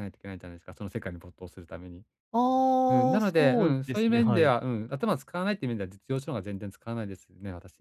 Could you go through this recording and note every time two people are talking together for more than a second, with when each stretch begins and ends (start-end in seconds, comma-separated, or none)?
2.9-4.5